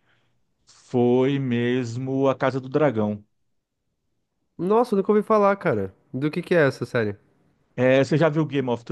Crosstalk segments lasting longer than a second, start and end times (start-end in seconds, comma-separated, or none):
none